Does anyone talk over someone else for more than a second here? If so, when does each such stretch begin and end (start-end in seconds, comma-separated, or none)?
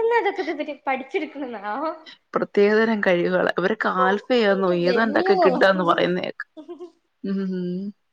4.5-6.1